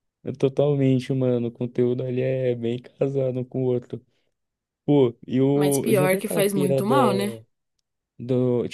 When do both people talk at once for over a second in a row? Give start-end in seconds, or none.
5.5-6.9